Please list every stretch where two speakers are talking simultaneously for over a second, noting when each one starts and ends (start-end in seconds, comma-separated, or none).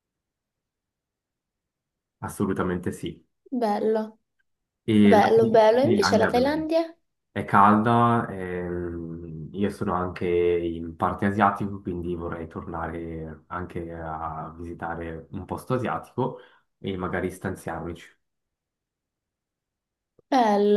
5.0-6.5